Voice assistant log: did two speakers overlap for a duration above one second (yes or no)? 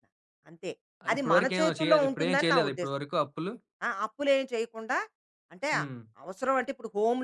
yes